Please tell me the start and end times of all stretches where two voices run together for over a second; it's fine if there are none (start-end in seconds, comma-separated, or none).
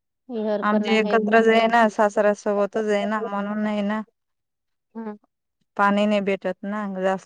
2.6-3.8